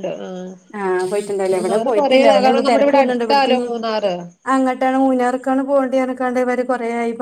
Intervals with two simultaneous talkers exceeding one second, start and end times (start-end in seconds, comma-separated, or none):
1.5-3.7